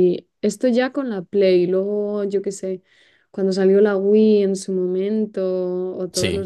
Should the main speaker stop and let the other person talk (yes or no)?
no